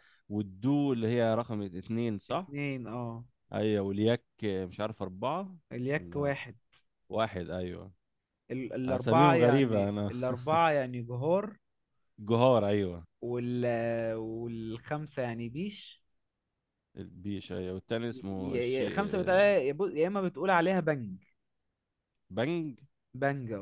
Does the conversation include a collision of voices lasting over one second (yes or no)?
yes